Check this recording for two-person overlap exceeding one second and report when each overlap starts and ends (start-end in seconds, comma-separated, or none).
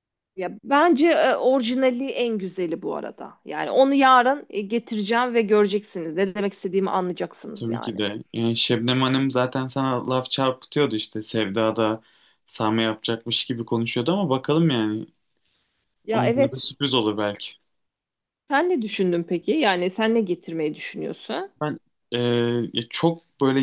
none